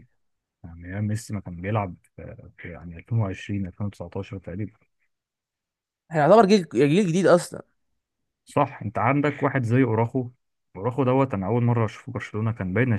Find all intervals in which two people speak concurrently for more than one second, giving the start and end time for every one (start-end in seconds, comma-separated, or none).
none